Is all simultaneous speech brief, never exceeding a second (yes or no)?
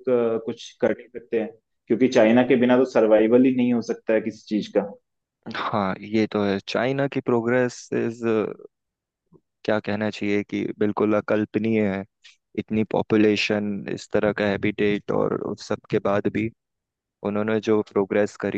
yes